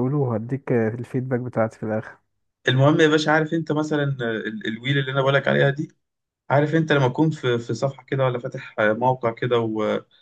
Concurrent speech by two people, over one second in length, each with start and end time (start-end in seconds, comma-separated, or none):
none